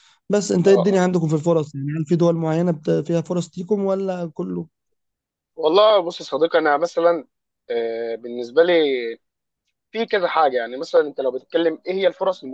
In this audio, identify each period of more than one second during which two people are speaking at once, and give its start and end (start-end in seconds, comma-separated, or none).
none